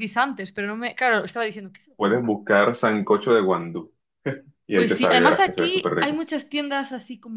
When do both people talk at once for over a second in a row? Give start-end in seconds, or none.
4.7-6.2